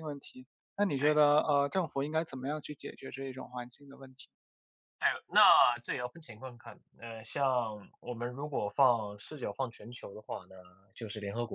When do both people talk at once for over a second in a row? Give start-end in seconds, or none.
none